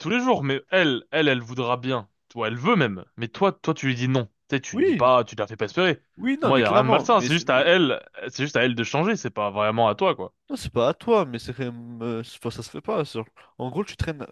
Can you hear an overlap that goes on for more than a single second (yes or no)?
yes